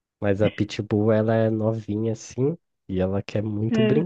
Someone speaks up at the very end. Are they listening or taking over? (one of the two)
listening